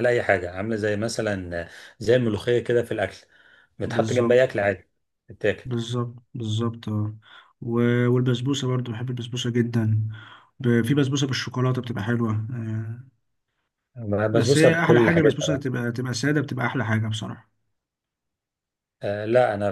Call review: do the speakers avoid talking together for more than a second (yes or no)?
no